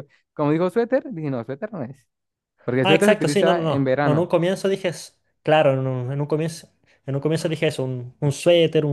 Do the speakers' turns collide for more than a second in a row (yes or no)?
yes